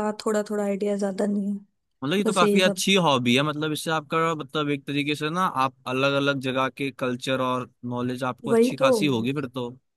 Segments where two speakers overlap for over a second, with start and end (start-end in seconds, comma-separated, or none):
none